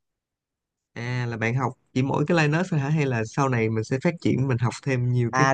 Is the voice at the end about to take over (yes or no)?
yes